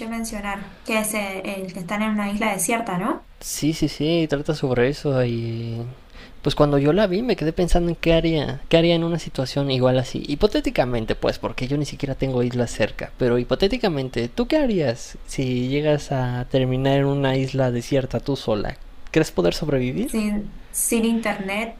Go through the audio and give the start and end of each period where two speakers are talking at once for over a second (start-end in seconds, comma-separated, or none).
none